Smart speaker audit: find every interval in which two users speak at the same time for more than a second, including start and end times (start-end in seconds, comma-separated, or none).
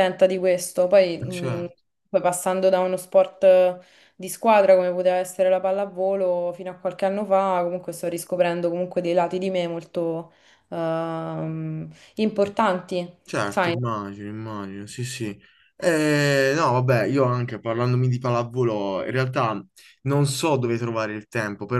none